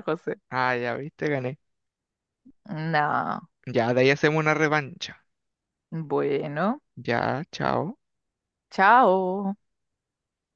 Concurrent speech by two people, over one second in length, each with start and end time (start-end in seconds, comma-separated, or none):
none